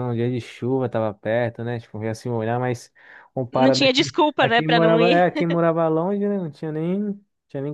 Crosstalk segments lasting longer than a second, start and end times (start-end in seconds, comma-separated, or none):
3.5-5.2